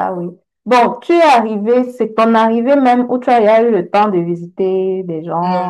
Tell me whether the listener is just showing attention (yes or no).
no